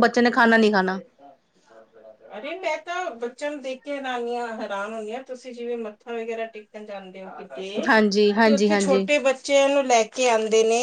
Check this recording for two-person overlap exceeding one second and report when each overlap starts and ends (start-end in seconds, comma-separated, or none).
7.9-9.1